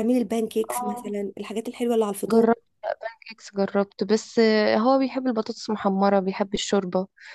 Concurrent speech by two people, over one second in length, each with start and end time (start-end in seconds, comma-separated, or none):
none